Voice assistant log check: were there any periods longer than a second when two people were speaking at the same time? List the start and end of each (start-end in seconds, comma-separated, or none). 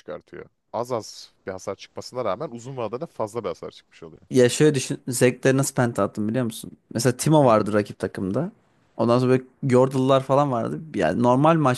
none